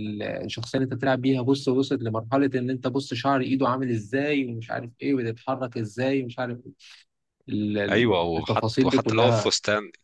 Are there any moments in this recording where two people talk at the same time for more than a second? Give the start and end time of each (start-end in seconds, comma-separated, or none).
7.9-9.5